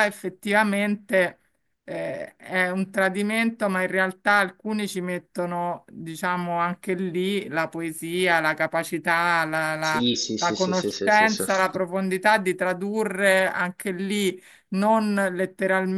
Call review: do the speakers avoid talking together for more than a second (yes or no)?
no